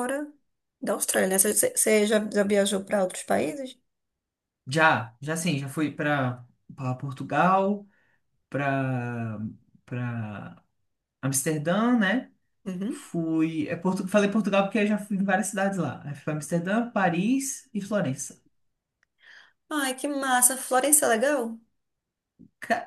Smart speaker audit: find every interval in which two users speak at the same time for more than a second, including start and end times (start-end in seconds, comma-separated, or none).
none